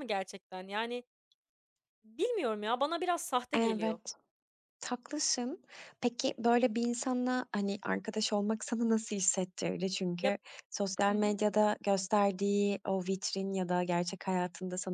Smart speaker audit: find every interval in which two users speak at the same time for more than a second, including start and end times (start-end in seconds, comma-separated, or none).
none